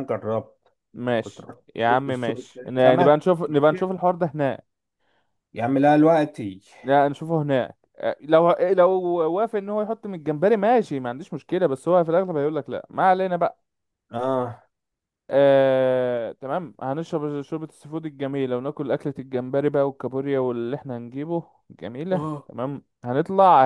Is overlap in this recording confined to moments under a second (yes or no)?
no